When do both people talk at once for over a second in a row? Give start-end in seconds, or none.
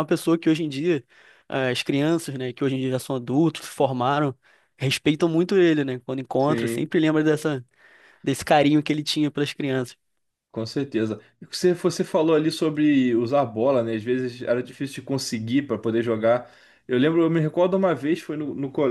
none